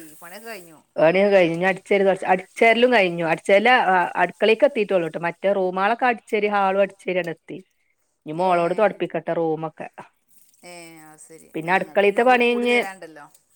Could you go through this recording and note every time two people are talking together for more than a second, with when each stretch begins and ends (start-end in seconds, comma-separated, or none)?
none